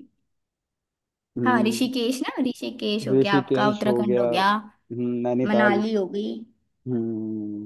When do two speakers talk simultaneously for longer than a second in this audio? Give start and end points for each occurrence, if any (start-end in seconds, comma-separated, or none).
3.1-4.5